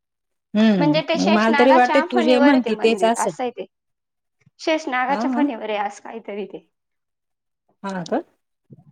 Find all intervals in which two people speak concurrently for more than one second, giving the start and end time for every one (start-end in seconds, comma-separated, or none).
0.8-3.4